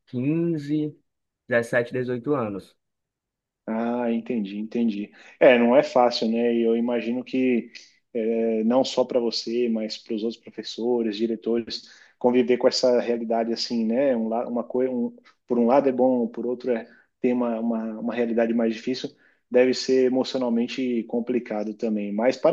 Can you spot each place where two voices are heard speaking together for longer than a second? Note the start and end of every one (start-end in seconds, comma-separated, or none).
none